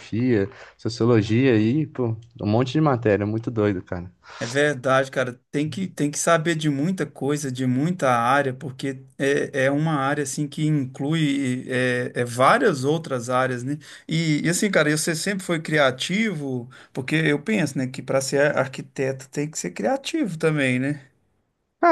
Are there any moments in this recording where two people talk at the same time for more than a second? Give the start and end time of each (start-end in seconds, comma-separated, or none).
none